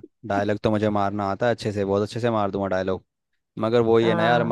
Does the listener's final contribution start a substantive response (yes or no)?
no